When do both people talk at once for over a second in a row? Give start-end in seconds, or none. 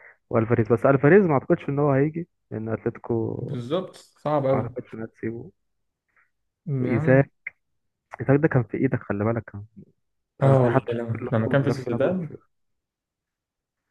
10.4-12.4